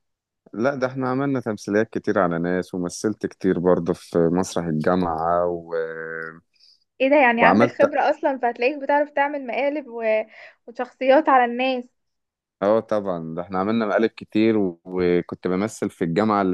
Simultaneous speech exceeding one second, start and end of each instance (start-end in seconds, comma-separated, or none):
none